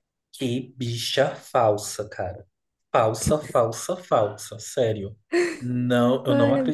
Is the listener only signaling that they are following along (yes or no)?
yes